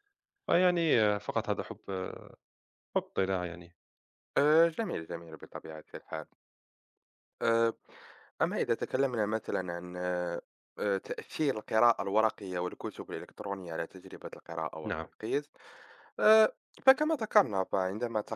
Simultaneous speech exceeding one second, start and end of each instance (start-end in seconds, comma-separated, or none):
none